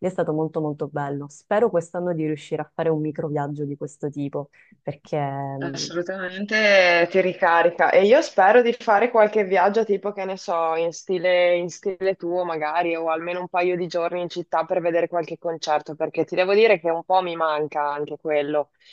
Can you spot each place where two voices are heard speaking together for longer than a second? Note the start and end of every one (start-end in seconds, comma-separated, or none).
none